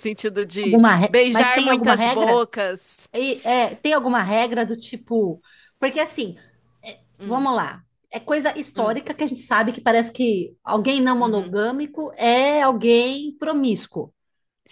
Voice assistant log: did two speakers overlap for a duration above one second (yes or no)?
yes